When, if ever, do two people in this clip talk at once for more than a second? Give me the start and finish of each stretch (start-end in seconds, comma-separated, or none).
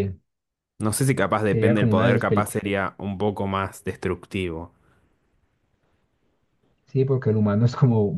1.4-2.8